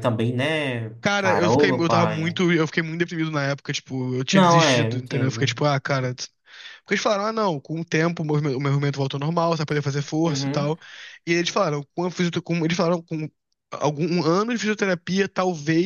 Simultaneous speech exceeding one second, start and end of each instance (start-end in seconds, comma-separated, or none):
1.0-2.4, 4.3-5.6